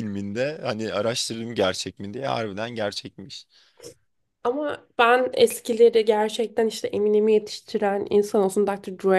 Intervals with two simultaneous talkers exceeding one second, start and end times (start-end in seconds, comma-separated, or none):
none